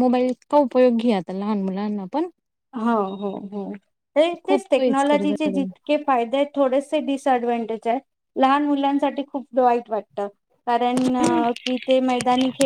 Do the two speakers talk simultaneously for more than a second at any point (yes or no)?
yes